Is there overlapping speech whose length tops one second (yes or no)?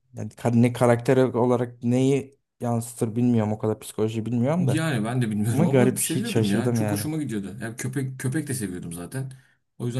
yes